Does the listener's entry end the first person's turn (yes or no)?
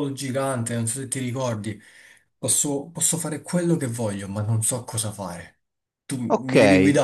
yes